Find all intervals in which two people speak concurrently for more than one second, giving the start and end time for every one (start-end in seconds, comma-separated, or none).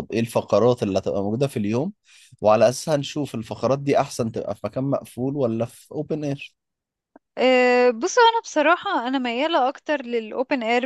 none